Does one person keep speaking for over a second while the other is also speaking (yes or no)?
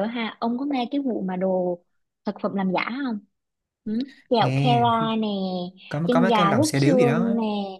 yes